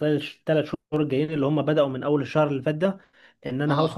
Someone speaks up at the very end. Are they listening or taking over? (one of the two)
listening